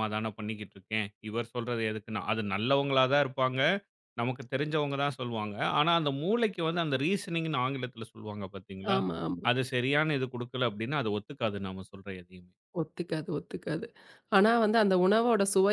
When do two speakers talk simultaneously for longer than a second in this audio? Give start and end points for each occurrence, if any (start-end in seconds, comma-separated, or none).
none